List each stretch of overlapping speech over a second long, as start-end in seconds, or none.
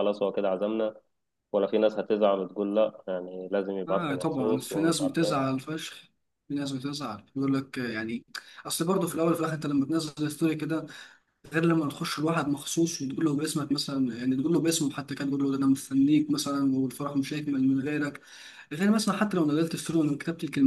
3.9-5.4